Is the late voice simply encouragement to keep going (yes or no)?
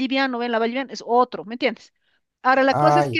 yes